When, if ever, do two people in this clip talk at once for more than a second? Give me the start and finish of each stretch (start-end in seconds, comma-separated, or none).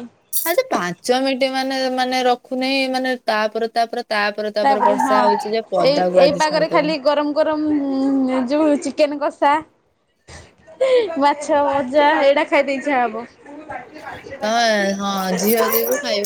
4.7-7.0